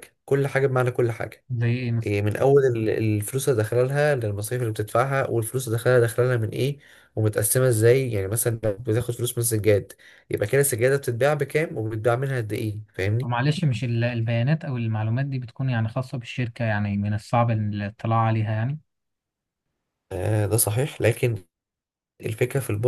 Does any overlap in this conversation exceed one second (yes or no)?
no